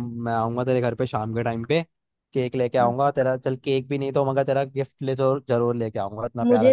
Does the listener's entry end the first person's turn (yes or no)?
yes